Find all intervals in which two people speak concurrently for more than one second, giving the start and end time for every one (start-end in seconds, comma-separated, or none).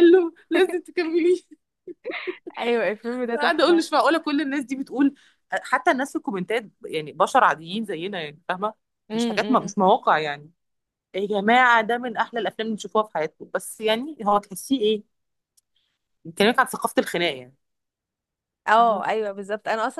none